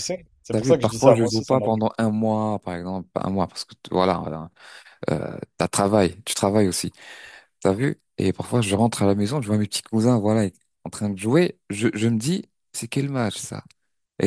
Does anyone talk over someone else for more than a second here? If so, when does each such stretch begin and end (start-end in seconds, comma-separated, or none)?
0.5-1.8